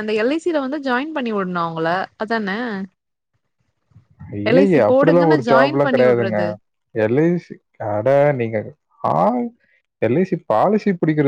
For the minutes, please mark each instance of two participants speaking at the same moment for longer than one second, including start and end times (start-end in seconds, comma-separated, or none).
4.5-6.4